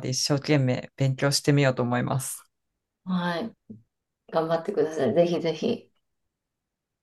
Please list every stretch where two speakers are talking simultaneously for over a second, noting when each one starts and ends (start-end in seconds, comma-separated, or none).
none